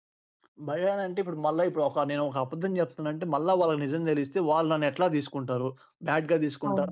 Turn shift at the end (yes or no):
no